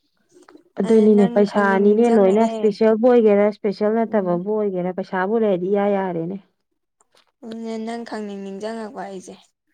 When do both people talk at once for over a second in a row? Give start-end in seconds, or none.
0.9-2.6